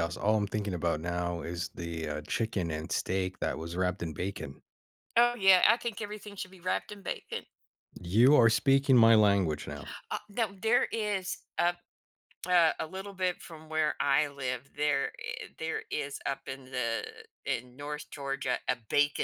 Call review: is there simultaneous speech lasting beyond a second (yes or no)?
no